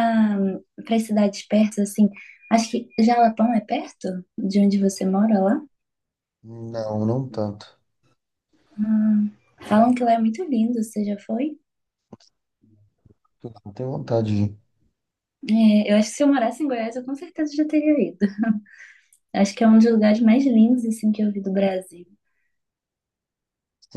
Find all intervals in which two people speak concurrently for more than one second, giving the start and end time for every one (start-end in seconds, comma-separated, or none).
none